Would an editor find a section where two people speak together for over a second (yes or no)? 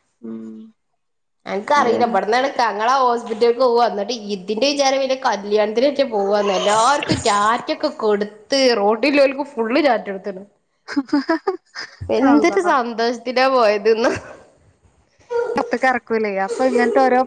no